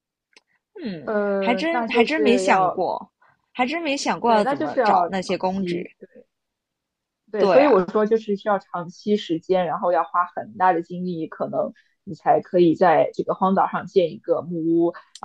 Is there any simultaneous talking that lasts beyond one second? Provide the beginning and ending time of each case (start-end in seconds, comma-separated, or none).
1.0-2.8, 4.2-6.0